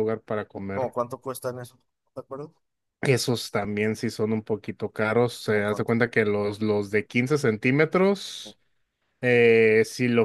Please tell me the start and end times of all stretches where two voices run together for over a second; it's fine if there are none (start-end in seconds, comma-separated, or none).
none